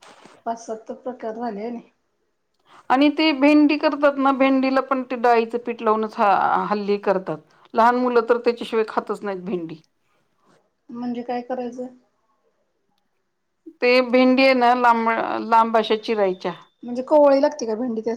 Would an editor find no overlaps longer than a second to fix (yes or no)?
yes